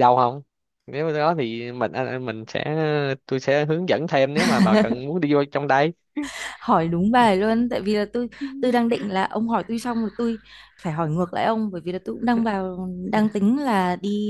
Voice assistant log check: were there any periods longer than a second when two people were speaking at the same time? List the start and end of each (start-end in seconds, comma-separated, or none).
none